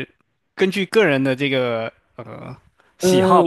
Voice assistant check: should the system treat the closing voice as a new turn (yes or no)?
yes